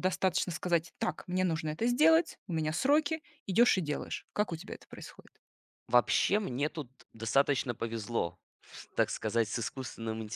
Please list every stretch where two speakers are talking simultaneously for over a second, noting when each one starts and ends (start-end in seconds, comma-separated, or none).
none